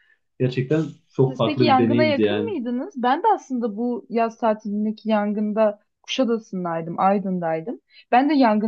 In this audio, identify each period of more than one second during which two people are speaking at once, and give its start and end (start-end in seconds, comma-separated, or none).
1.3-2.5